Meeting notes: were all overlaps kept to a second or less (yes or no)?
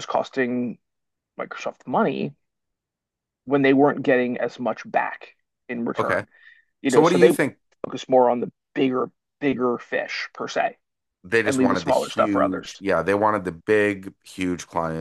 no